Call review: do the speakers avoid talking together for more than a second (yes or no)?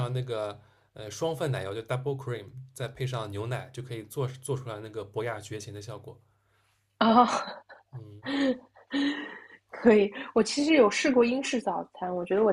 yes